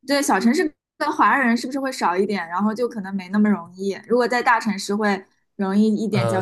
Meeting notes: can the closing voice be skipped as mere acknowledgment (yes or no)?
no